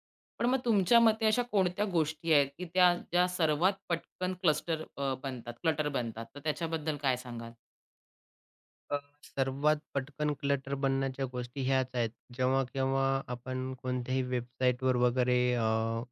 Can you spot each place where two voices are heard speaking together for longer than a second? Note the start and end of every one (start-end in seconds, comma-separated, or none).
none